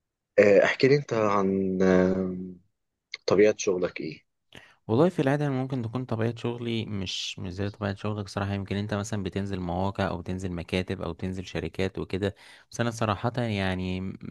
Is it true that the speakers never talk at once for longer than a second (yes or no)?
yes